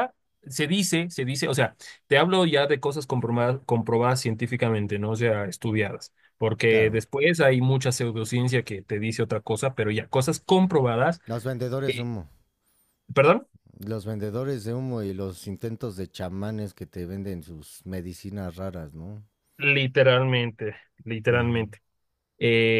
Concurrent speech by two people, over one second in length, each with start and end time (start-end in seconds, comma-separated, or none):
none